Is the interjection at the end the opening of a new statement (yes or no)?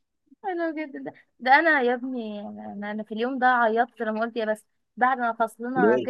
no